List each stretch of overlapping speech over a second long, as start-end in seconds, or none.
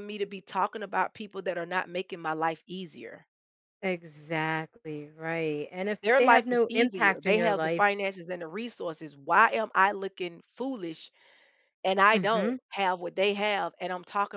6.0-7.8